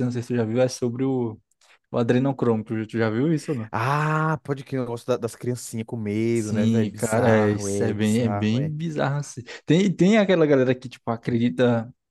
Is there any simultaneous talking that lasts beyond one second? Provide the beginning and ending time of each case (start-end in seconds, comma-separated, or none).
6.3-8.7